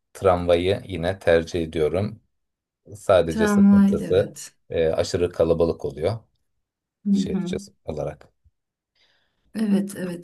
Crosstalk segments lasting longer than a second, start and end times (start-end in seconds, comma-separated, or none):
3.3-4.5